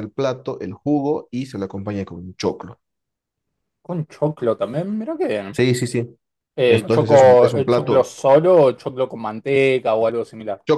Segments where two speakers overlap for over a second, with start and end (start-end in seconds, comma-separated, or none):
6.7-8.1